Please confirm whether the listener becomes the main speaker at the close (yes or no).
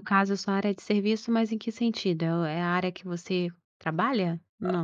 yes